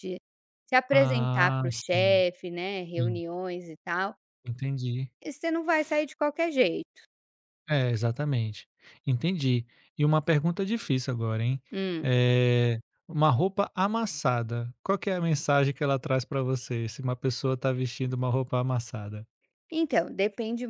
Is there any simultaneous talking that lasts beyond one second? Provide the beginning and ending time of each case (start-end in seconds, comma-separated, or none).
0.9-2.2